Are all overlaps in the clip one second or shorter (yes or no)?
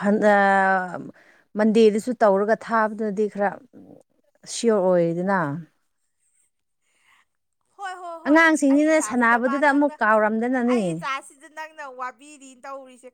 no